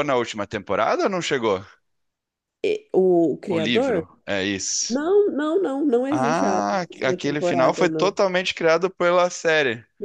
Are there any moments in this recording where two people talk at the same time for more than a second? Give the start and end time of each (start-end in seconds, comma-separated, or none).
6.1-8.1